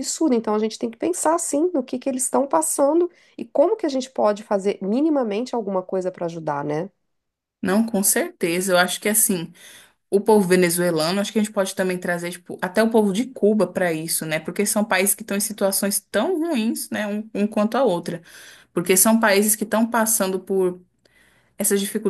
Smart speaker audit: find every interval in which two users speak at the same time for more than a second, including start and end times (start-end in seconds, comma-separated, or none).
none